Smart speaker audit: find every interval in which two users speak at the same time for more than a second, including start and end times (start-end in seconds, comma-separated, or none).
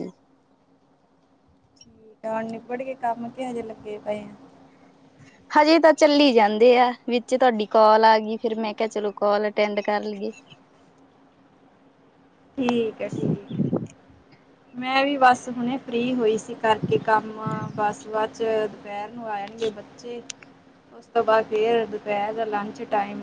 none